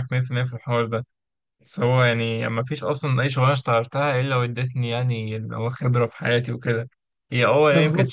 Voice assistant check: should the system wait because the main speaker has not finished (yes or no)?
yes